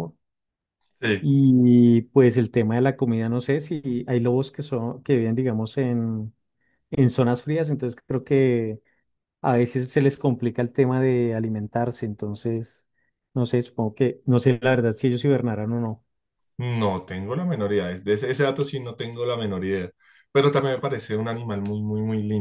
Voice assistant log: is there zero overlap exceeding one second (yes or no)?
yes